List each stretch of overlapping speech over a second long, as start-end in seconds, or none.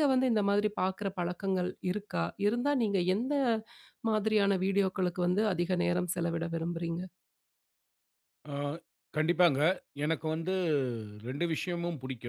none